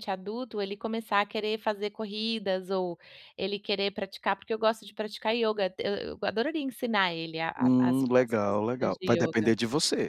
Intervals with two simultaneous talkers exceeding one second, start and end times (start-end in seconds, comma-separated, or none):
7.6-9.5